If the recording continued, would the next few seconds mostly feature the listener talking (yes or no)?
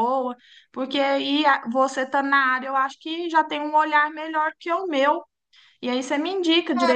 yes